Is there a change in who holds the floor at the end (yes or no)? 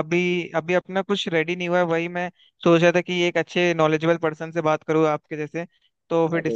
no